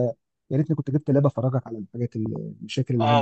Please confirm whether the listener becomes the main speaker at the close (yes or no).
yes